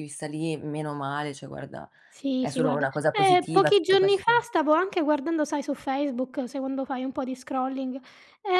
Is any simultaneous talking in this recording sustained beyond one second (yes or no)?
yes